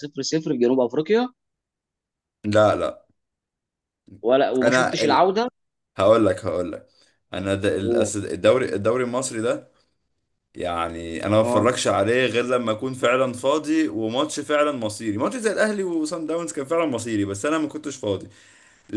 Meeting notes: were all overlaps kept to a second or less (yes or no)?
yes